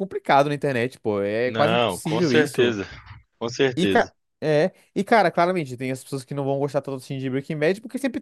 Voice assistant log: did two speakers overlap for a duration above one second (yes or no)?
yes